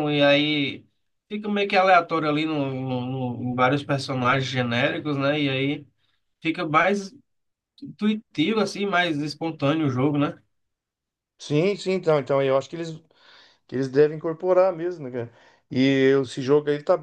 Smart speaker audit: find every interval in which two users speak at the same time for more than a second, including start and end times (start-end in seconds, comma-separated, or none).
none